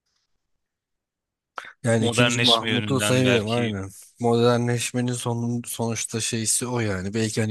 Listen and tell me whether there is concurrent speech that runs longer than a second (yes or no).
yes